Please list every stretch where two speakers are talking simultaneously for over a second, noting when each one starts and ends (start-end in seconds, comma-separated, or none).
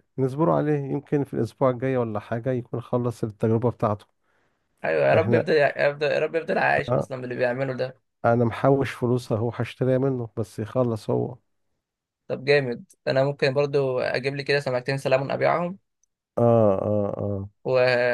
none